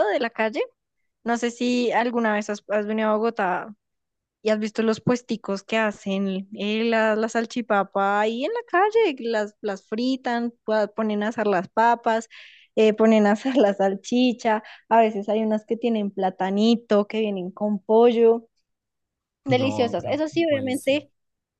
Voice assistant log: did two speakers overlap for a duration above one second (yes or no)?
yes